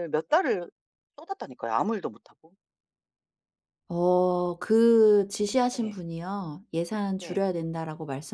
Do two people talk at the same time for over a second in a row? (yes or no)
no